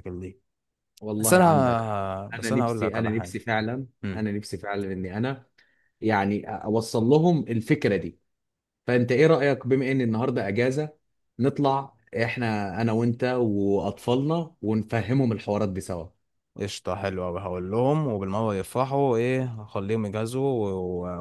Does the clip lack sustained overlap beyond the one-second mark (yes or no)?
no